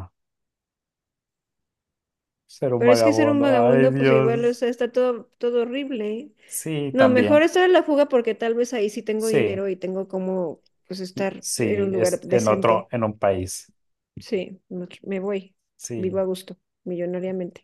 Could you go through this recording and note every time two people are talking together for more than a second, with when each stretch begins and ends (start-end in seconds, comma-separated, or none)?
2.8-4.6, 11.1-12.9